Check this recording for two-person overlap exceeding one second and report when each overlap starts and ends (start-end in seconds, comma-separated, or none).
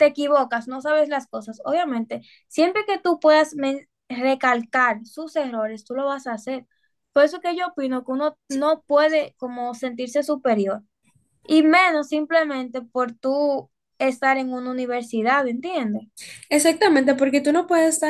none